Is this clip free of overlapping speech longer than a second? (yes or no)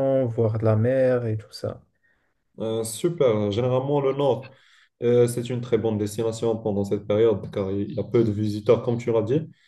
yes